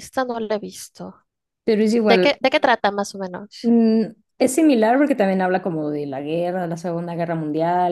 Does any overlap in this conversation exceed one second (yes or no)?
no